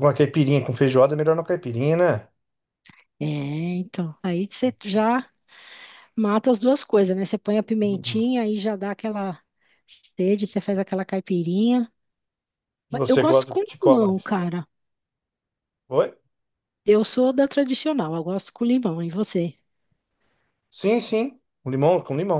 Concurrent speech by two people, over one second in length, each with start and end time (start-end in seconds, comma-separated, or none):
12.9-14.3